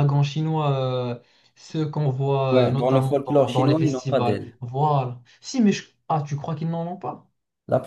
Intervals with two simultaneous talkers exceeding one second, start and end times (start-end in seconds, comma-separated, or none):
2.5-4.5